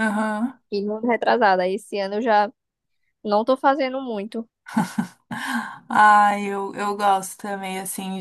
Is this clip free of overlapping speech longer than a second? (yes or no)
yes